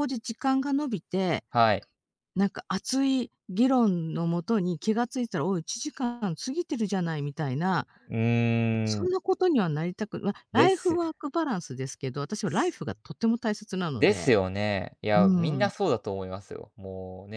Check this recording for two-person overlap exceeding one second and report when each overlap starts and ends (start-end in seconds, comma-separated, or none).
none